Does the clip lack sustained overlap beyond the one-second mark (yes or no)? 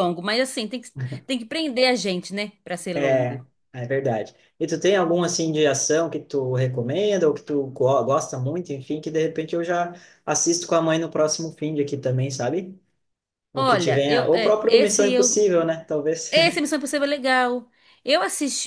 no